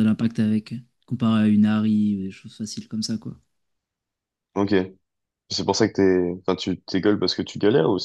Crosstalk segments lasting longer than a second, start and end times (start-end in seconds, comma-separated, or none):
none